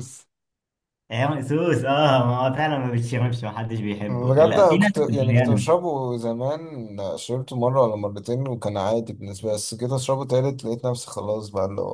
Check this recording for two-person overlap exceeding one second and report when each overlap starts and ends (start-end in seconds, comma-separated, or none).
4.1-5.7